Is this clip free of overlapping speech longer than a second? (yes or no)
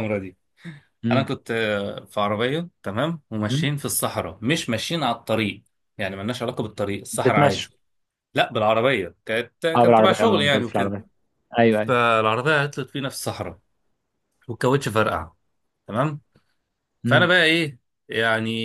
no